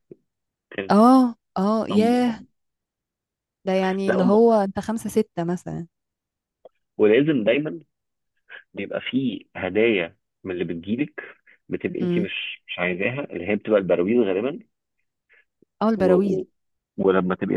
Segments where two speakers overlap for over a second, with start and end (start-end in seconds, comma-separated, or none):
none